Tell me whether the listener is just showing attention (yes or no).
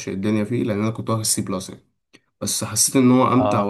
yes